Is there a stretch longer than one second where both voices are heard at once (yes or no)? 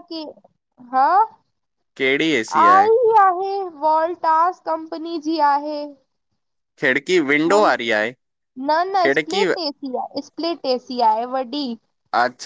no